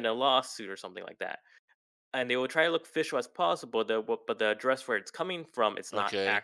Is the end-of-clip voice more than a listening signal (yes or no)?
no